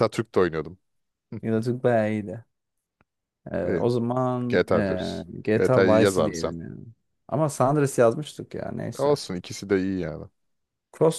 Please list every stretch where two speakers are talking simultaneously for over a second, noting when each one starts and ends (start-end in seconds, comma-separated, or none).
4.5-6.5